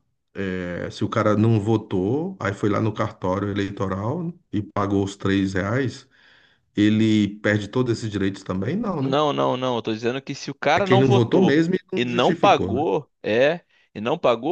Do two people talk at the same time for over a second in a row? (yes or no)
yes